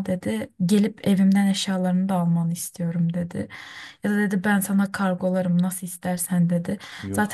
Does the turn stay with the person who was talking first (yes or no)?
yes